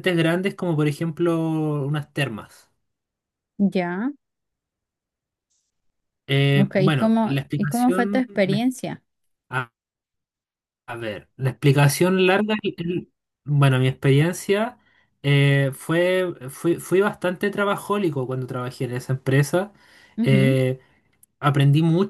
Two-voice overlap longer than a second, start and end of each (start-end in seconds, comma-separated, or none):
6.6-8.7